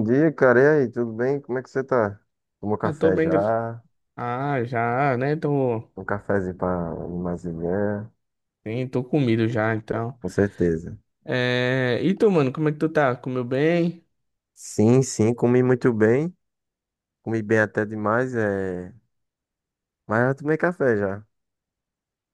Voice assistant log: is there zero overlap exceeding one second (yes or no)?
yes